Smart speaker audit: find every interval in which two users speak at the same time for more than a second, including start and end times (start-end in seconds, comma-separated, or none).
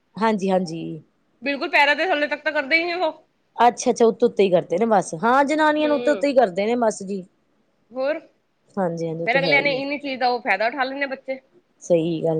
none